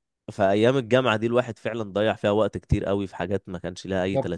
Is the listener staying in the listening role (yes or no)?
no